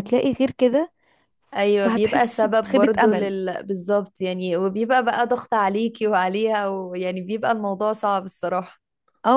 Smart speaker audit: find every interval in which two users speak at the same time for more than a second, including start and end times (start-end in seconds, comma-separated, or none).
1.8-3.3